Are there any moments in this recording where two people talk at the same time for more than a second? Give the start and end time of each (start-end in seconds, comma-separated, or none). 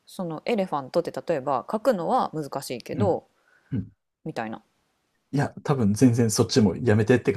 none